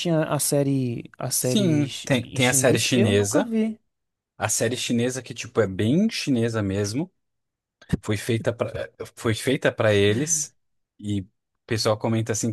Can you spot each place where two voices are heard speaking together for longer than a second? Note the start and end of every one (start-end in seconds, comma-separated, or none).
1.3-3.5